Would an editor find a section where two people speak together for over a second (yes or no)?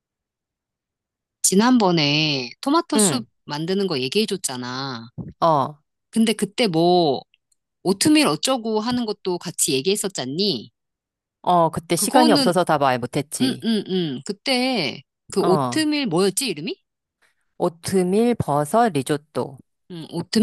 no